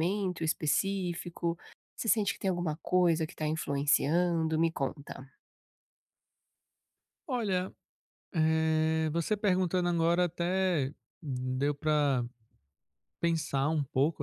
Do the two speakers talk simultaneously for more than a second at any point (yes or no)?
no